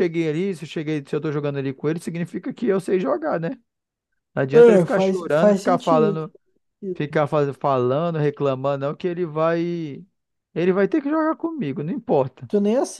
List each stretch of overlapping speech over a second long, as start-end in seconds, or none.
4.5-6.2